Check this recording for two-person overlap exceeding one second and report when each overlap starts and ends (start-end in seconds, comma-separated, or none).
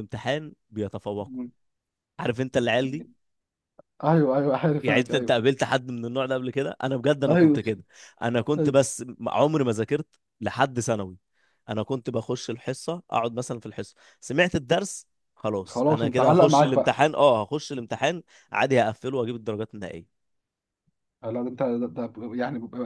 15.7-17.0